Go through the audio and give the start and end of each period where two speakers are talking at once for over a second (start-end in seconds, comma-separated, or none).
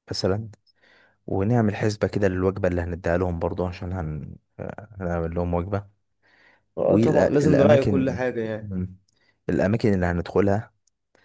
6.8-8.2